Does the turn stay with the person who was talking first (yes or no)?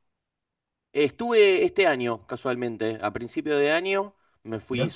yes